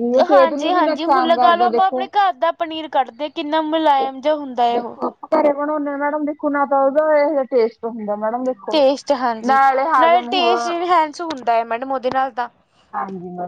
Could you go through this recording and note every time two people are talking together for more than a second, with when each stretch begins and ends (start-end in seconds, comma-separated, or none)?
none